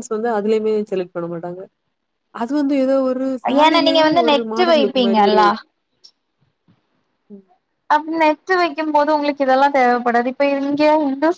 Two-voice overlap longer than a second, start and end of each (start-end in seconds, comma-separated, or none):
3.6-5.4